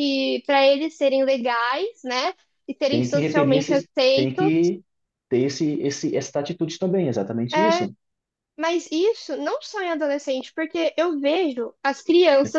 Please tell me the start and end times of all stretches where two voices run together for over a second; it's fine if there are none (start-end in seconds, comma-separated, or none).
2.9-4.5